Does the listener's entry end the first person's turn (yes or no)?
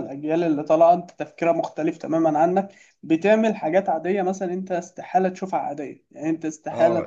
yes